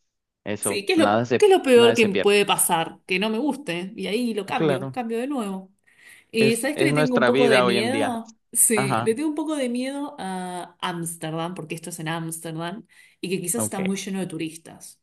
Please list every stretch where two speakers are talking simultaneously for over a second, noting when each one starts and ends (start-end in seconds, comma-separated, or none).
0.6-2.4, 6.4-8.1